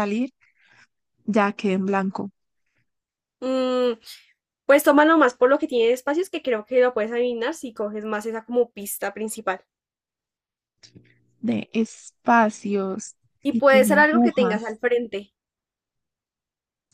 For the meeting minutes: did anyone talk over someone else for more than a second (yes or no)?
yes